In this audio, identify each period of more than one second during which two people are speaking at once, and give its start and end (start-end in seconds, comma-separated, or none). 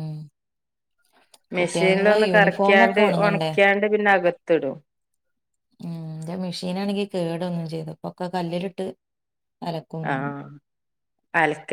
1.6-3.5